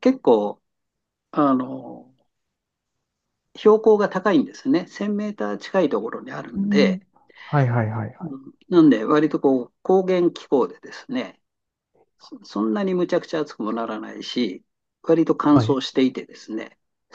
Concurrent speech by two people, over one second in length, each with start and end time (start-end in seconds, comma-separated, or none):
none